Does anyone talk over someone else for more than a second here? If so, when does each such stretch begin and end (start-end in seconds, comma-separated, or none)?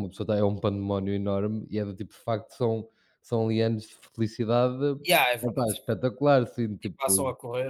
none